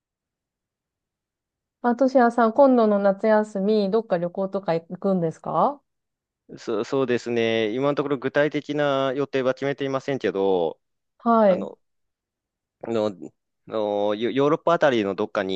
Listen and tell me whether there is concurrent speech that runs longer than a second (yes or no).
no